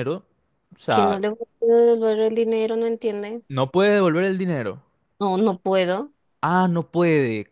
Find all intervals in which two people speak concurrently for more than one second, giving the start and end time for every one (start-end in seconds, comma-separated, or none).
none